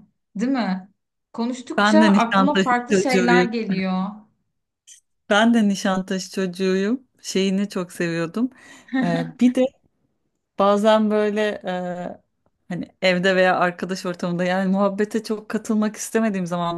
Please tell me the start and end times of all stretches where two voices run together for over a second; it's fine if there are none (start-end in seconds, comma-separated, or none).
1.8-3.5